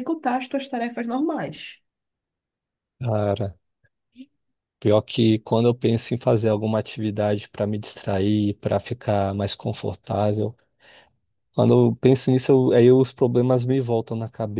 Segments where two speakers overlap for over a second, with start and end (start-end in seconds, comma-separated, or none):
none